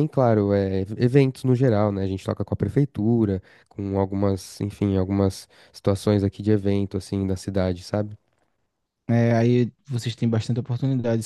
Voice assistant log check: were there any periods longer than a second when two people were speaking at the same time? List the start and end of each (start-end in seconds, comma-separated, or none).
none